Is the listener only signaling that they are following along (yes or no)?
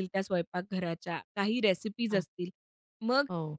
yes